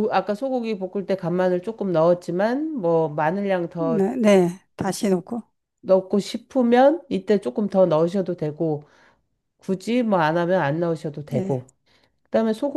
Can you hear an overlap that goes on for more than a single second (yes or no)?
no